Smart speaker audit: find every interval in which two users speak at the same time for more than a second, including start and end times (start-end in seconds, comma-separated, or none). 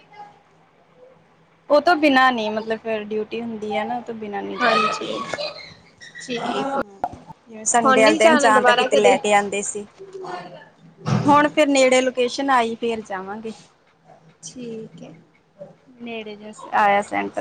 7.8-9.2